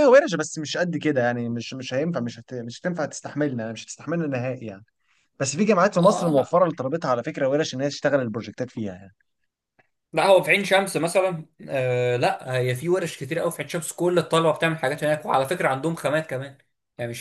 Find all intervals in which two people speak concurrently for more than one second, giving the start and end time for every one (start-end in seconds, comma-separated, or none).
none